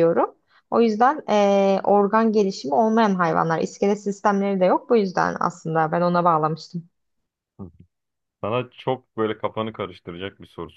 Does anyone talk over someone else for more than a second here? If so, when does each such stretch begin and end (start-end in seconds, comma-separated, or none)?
none